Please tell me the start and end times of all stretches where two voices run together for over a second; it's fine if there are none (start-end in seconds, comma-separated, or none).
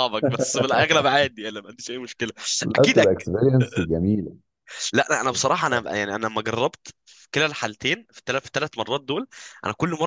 none